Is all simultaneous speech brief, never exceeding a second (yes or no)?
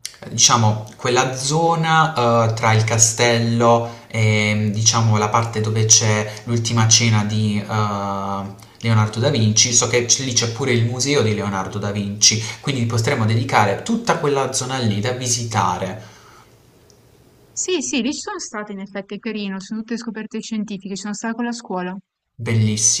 yes